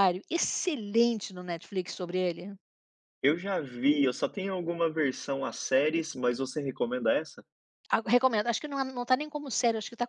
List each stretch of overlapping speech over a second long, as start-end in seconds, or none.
none